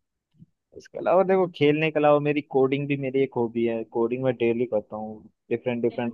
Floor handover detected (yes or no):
no